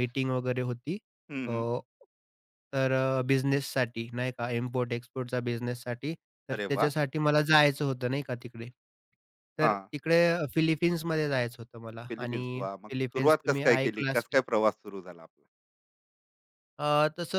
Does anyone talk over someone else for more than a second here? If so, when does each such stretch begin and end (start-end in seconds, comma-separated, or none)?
12.1-14.4